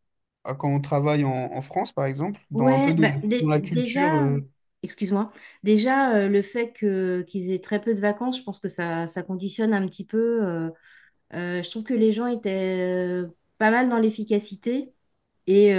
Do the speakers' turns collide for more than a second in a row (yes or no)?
yes